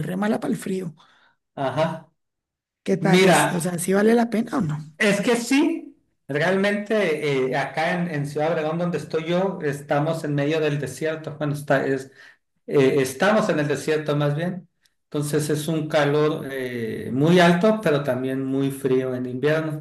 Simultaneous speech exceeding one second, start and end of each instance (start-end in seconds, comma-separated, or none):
none